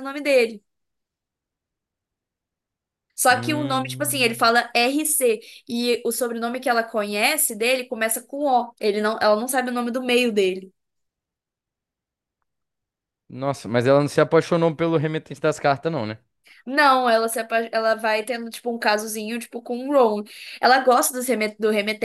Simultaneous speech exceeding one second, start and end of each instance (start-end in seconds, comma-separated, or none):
3.3-4.5